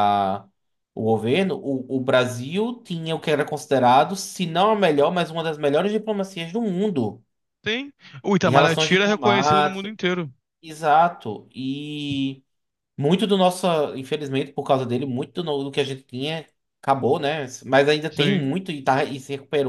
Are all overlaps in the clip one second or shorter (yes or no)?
no